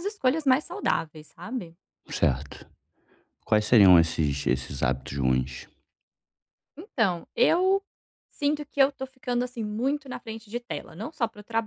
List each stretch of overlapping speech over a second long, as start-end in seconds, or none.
none